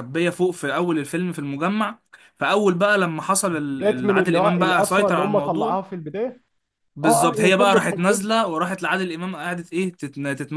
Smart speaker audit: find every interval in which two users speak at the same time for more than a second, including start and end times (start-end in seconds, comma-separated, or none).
3.7-5.8, 7.0-8.3